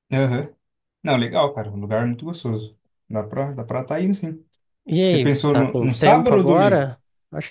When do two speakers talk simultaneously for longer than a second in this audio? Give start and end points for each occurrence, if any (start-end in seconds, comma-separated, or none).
5.0-6.9